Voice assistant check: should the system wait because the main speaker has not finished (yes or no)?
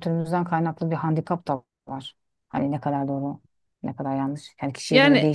no